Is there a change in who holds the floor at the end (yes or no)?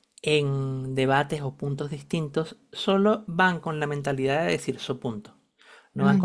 no